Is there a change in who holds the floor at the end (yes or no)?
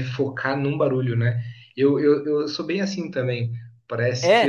no